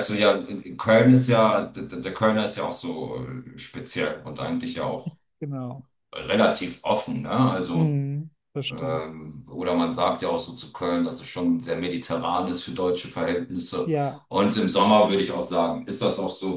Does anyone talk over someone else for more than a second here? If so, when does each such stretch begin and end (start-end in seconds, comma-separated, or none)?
none